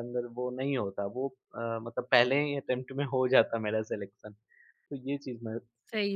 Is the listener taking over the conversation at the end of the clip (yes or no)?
yes